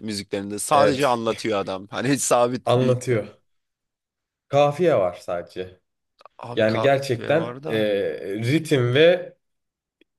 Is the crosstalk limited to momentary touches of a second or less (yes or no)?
no